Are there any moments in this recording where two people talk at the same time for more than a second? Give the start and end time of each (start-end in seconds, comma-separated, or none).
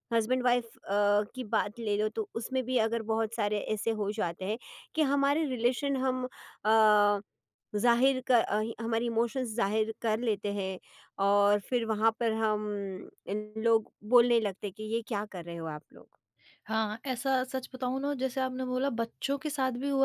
none